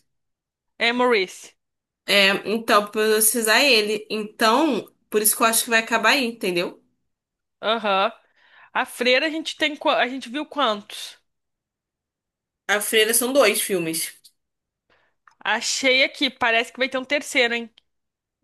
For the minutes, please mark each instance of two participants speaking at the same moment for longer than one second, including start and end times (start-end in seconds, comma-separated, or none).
none